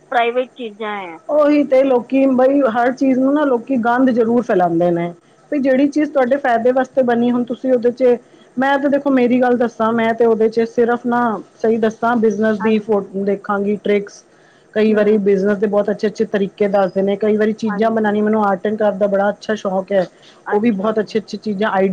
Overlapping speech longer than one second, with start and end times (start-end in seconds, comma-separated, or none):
none